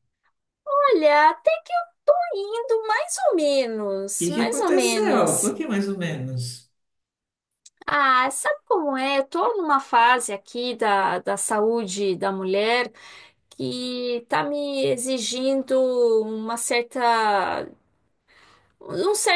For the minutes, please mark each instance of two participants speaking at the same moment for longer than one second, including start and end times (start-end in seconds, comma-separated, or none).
4.2-5.5